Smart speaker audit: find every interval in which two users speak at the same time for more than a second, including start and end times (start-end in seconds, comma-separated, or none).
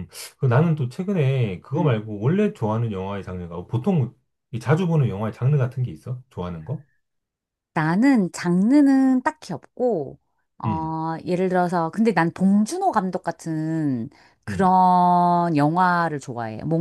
none